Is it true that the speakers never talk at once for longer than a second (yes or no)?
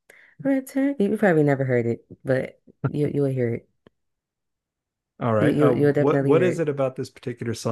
no